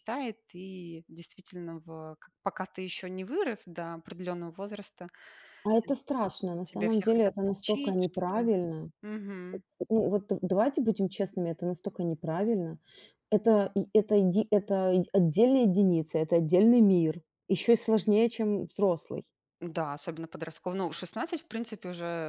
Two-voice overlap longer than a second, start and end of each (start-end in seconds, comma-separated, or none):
6.6-8.5